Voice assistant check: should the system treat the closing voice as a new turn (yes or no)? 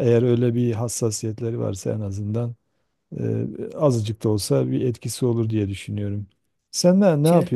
no